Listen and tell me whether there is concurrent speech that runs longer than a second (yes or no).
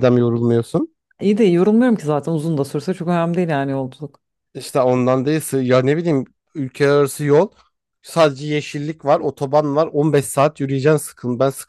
no